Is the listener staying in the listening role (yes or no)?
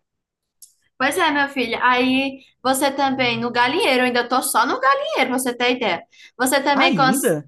yes